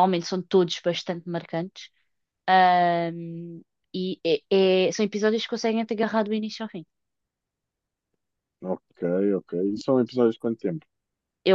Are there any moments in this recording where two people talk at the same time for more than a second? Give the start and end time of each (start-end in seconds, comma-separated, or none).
none